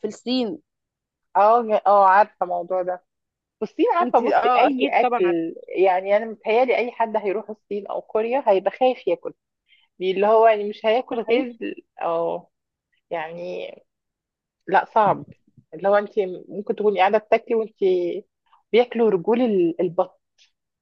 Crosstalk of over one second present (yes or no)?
yes